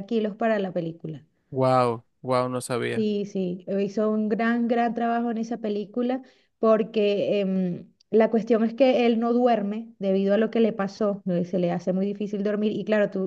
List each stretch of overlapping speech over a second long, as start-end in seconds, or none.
none